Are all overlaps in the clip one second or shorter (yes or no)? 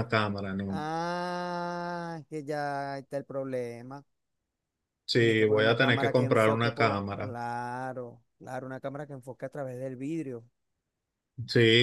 no